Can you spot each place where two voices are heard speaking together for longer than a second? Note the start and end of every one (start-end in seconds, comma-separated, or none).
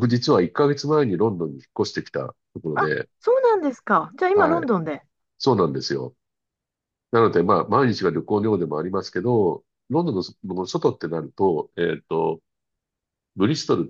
none